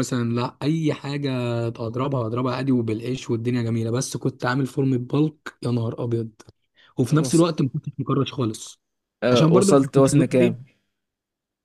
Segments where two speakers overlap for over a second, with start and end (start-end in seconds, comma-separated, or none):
9.3-10.6